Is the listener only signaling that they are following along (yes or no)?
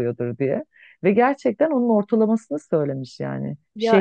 no